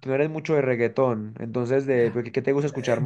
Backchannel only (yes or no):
no